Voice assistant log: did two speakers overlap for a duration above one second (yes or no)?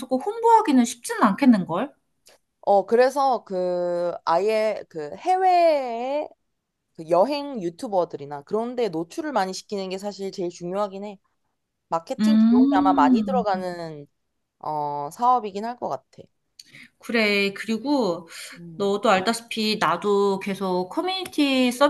yes